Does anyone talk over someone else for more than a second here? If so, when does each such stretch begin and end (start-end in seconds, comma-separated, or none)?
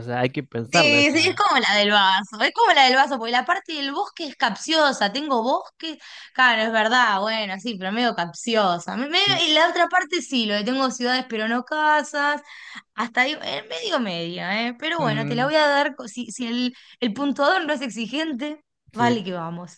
none